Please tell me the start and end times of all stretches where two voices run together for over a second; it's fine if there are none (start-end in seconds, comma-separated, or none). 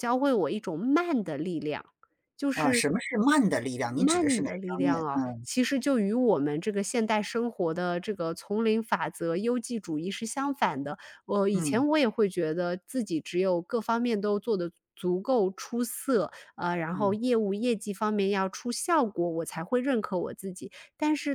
3.8-5.5